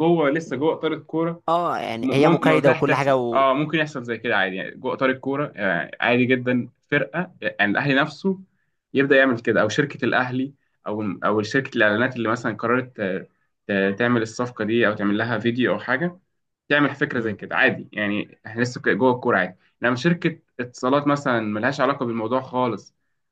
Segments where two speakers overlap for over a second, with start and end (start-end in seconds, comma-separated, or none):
2.0-3.5